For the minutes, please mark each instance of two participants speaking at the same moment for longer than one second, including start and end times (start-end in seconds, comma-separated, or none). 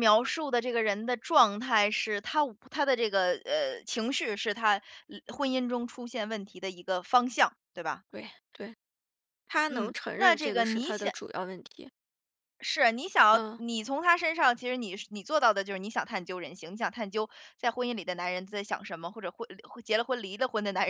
9.7-11.1